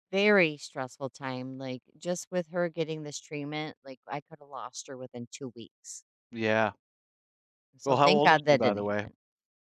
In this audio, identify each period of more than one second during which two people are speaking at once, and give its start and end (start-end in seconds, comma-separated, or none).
7.8-9.1